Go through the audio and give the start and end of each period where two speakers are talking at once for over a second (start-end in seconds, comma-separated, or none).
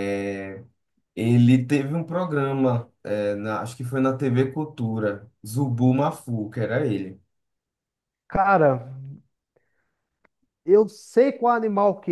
none